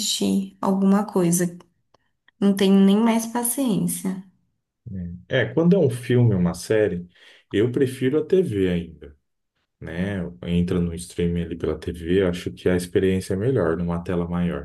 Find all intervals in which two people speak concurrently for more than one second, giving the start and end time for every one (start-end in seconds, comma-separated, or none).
none